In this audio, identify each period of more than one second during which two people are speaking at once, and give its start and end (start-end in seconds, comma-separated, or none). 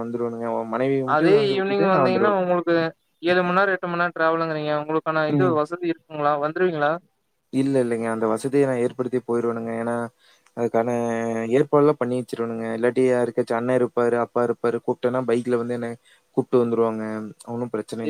none